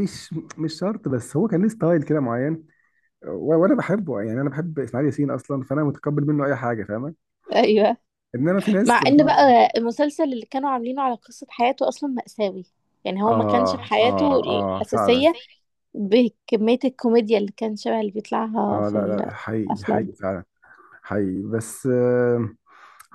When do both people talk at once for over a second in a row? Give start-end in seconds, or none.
13.3-15.3